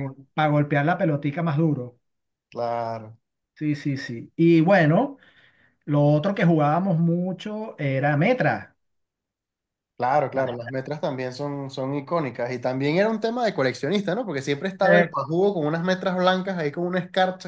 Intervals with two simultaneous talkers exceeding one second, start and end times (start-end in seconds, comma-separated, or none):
none